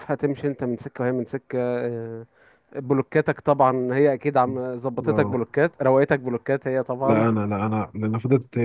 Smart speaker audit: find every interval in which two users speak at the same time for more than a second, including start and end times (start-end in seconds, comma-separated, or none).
none